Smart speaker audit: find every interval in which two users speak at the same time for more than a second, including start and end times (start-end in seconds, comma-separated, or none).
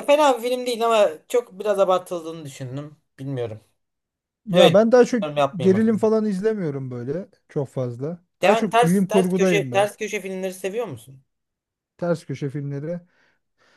8.4-9.9